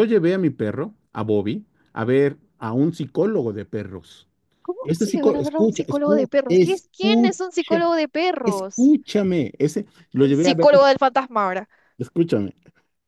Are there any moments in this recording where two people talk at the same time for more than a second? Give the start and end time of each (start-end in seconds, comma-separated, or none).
4.8-7.8